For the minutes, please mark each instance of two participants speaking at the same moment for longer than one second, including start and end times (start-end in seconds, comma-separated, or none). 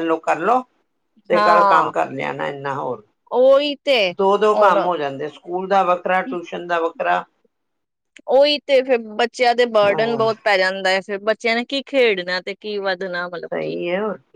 none